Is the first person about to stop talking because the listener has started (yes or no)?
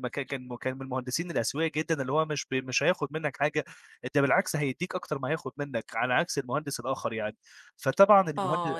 yes